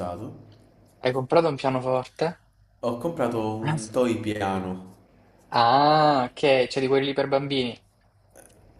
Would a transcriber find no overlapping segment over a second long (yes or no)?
yes